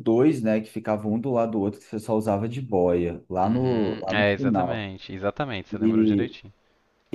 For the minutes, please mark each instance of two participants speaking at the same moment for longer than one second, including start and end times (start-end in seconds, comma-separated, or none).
3.4-4.9